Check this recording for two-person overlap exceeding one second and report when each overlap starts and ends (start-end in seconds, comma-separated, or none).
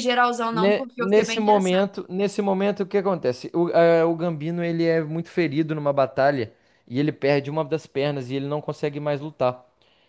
0.5-1.9